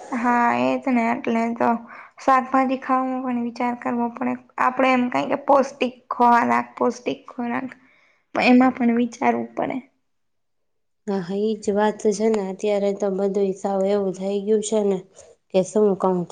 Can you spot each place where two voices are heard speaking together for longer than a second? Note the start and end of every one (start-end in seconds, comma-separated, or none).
none